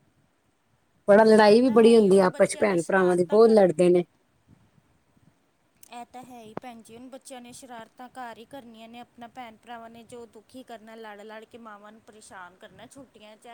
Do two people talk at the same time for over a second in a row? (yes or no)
yes